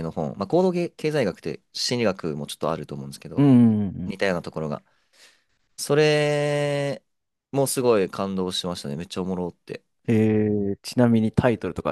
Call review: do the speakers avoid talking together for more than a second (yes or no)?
yes